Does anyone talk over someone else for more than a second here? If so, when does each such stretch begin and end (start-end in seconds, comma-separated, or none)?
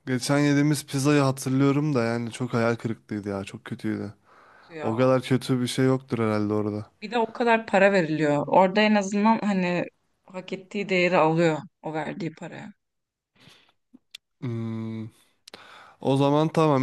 none